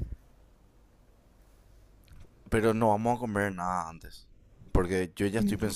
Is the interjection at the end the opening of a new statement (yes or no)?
no